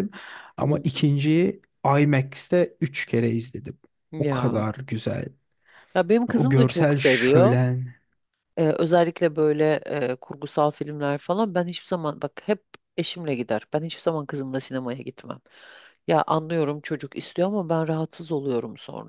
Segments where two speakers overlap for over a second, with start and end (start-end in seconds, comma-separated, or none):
6.3-7.5